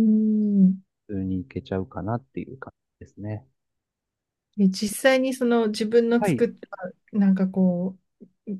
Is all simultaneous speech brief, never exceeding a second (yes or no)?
yes